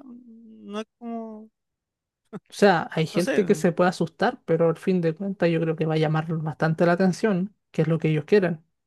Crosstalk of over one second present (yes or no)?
no